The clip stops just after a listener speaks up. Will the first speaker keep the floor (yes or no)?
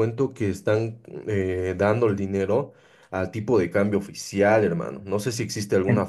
yes